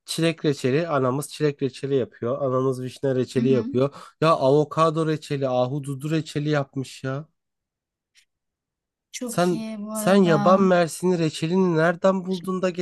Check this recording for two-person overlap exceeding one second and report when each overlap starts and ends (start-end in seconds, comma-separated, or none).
9.2-10.6